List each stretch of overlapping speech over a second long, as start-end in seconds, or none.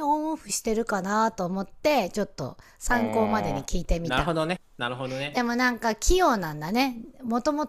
2.9-4.3